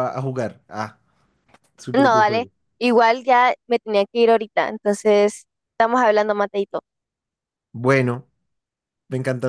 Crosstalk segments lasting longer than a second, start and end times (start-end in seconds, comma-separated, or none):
none